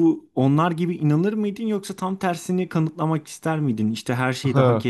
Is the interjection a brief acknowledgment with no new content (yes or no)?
yes